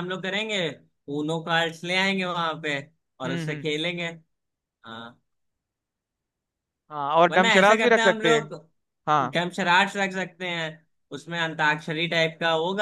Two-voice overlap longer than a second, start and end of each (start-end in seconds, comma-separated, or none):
7.3-8.5